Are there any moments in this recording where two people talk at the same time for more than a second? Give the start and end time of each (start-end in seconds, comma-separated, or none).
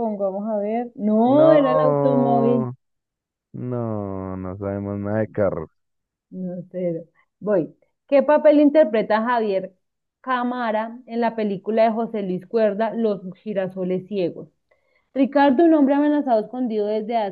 1.2-2.7